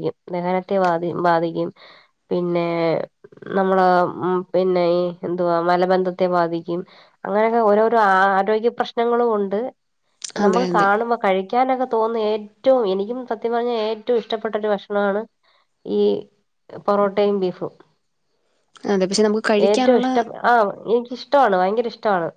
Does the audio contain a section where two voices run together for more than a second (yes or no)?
no